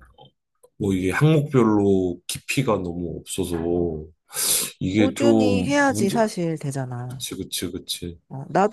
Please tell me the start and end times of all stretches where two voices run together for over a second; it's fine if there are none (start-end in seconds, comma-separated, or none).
5.0-6.2